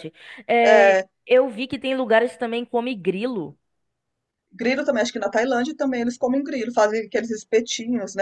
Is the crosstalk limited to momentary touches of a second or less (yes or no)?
yes